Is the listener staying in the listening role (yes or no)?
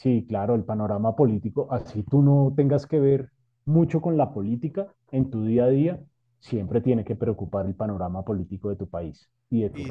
no